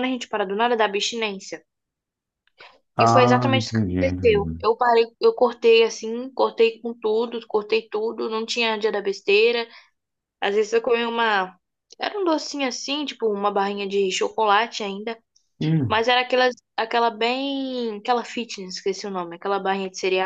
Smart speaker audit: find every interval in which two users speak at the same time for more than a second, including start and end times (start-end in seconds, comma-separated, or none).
3.0-4.7